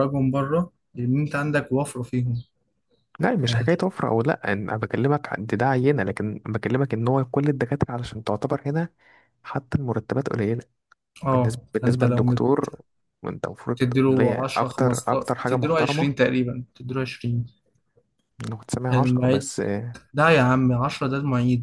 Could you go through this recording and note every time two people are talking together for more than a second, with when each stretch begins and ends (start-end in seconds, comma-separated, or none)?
11.3-12.6, 13.8-16.1